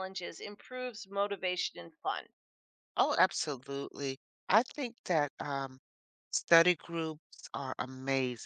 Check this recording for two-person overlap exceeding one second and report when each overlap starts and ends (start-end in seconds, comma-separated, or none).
none